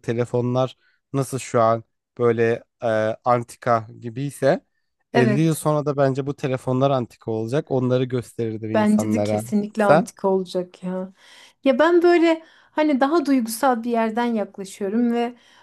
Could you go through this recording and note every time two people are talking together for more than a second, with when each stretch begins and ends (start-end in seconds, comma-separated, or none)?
8.7-10.1